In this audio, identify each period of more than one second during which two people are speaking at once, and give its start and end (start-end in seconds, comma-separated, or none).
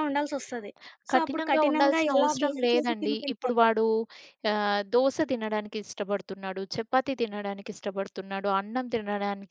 1.1-3.6